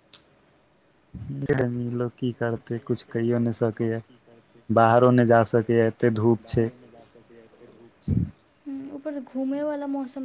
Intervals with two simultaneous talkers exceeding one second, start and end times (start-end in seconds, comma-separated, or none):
none